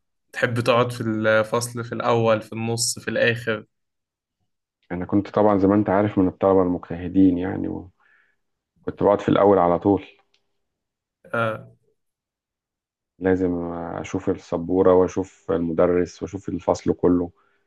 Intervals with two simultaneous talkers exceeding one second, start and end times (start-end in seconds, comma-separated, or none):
none